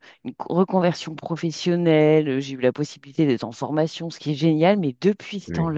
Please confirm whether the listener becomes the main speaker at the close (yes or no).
no